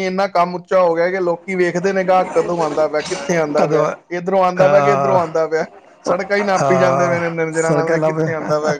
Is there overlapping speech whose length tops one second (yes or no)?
yes